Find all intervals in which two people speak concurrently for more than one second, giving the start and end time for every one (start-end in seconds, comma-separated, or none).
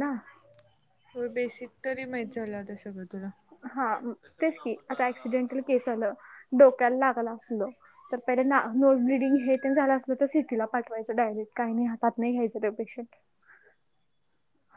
none